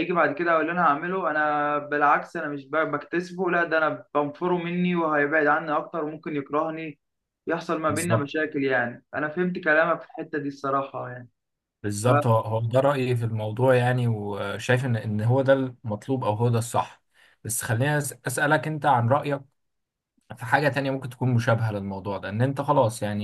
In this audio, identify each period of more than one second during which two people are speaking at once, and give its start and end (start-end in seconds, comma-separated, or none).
none